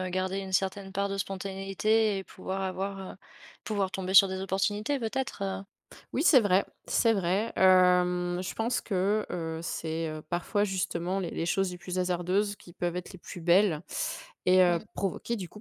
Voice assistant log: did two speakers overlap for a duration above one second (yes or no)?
no